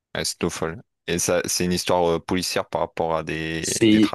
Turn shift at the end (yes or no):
yes